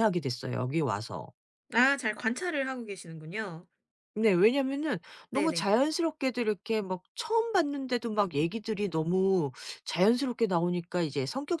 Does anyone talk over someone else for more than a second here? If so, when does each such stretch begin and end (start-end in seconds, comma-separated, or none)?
none